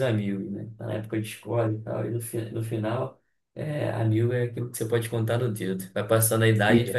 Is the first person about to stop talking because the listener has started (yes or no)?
no